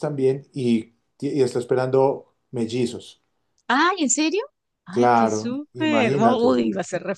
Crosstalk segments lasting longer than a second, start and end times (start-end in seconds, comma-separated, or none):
4.9-6.6